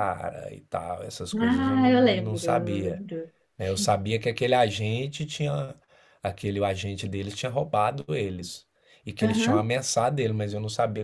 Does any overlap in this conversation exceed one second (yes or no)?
yes